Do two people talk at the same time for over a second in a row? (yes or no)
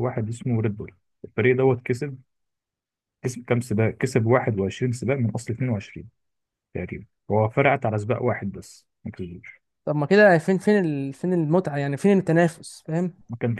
no